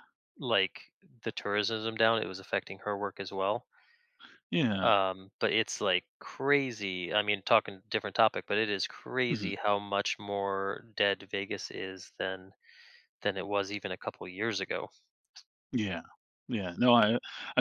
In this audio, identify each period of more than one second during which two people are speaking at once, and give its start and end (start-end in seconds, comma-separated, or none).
none